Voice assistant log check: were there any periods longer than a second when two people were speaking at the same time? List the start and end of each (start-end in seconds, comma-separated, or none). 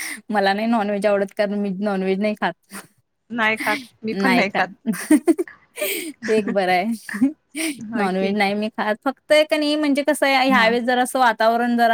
none